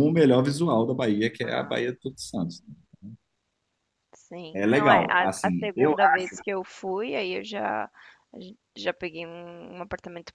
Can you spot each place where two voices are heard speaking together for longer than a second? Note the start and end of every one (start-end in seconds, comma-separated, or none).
4.5-5.9